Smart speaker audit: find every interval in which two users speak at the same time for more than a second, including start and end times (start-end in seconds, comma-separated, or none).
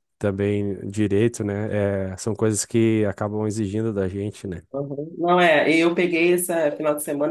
none